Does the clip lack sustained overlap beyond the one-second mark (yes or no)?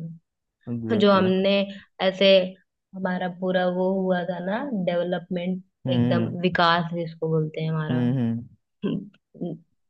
yes